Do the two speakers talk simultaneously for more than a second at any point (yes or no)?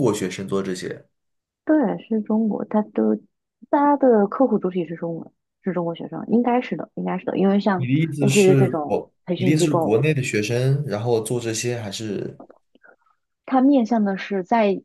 yes